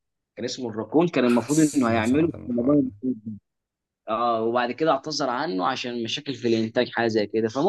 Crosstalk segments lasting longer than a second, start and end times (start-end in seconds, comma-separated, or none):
1.2-2.9